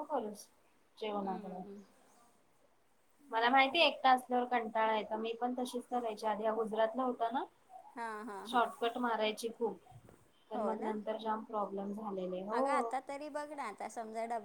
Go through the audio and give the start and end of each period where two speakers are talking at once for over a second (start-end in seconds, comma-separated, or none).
none